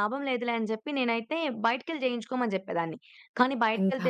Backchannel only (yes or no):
yes